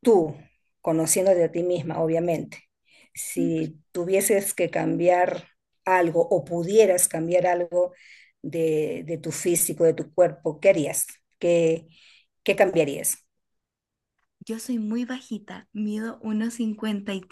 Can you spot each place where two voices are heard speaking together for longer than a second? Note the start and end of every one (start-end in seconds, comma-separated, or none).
none